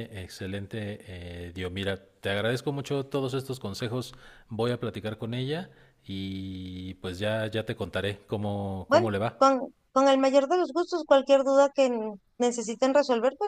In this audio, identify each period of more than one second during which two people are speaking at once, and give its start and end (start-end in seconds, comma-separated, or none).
none